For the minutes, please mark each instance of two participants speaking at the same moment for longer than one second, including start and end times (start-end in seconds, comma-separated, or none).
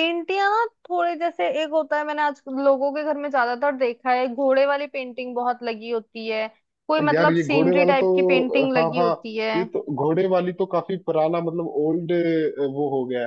7.1-9.1